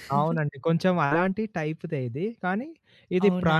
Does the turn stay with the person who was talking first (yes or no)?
yes